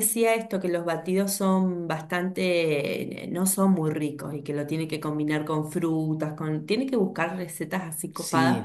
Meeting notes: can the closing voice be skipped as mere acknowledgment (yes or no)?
yes